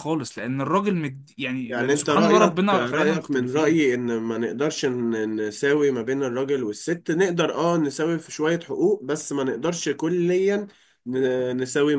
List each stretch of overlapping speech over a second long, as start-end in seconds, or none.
1.7-3.9